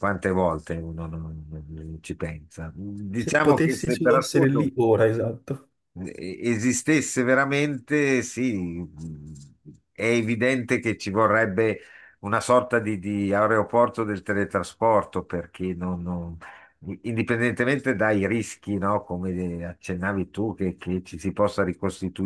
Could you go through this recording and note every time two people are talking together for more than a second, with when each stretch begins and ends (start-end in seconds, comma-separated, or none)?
3.1-4.7